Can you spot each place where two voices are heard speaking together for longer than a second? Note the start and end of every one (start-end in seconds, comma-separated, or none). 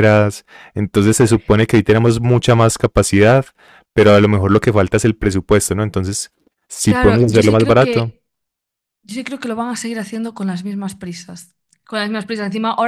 6.9-8.1